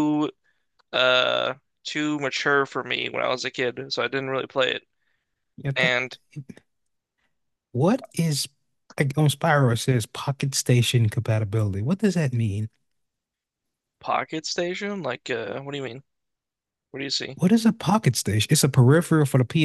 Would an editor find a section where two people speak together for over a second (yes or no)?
no